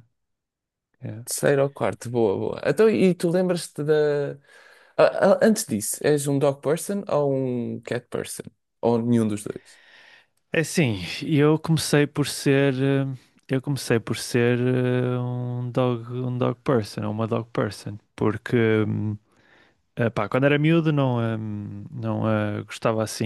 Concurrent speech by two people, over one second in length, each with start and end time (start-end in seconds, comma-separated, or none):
none